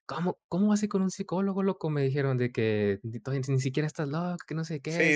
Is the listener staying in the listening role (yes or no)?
no